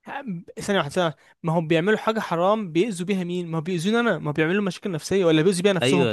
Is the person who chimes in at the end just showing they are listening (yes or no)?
no